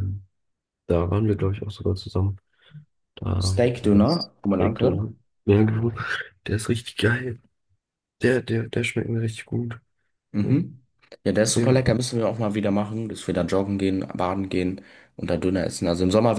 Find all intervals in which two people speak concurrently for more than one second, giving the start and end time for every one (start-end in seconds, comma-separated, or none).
3.4-5.0